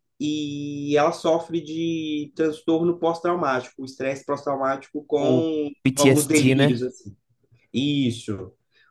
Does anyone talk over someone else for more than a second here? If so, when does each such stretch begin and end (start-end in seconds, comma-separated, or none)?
5.2-6.9